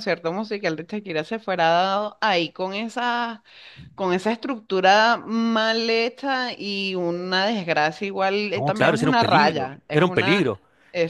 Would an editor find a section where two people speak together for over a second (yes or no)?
yes